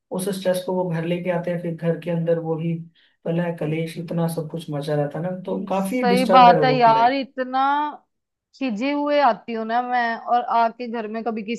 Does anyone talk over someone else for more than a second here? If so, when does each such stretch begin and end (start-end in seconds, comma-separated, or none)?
5.7-7.2